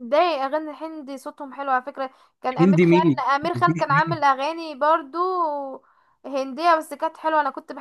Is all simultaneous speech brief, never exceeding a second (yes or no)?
no